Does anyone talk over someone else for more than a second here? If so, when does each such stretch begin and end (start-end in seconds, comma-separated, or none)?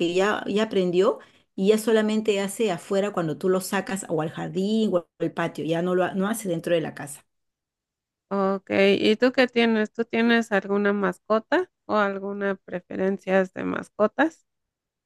none